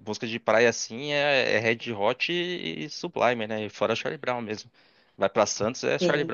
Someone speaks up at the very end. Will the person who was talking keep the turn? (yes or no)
no